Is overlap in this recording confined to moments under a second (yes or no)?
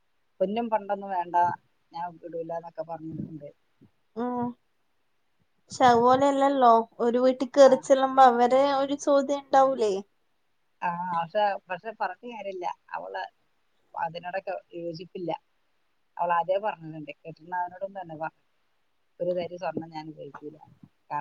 yes